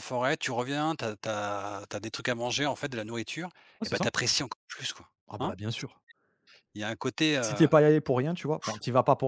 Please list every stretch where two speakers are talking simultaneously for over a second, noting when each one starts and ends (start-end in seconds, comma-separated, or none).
none